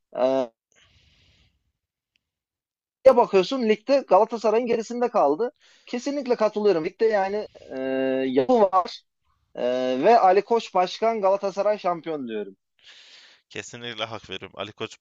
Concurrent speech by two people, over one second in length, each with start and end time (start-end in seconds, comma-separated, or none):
none